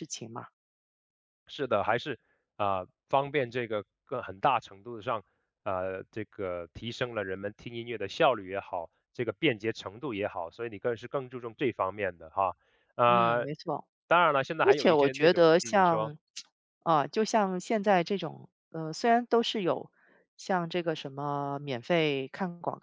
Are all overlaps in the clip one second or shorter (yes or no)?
no